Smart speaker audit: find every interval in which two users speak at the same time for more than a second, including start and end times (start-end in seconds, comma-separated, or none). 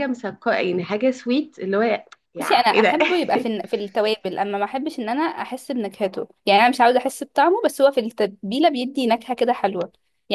none